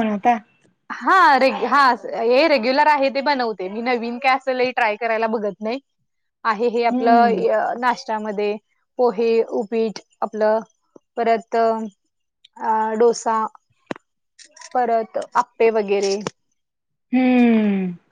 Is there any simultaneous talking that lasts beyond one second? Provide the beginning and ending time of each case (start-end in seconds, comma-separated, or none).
none